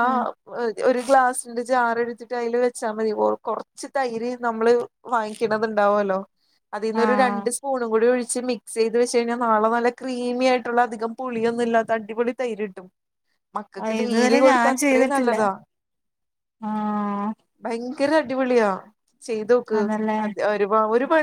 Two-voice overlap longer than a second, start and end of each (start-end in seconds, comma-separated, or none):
13.8-15.3